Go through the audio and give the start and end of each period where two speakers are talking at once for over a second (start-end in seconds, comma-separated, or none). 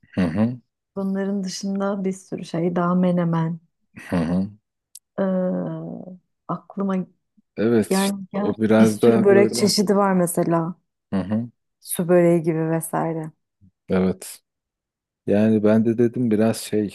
7.9-9.7